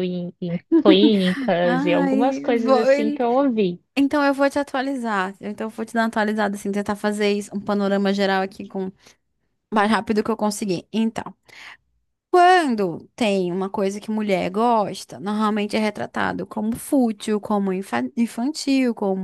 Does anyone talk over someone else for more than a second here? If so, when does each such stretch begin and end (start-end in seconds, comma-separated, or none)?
1.6-3.2